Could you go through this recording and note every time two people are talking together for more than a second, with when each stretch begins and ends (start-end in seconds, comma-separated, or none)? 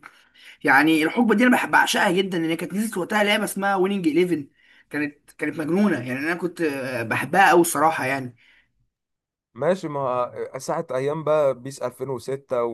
none